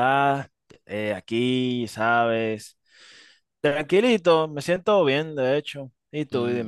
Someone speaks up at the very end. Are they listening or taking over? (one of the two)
taking over